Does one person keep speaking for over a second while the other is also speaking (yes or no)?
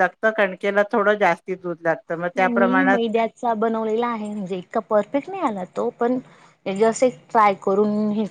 no